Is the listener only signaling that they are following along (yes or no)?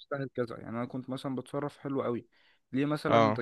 yes